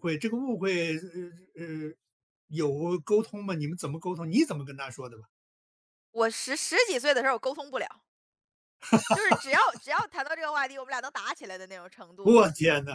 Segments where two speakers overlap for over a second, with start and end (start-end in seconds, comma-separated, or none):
none